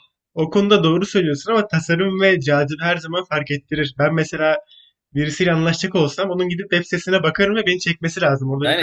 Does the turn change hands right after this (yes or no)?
yes